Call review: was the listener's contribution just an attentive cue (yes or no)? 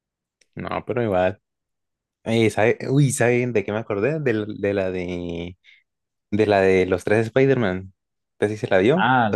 no